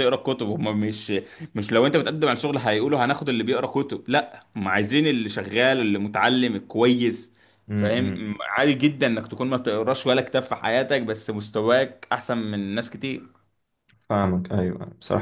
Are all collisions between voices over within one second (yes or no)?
yes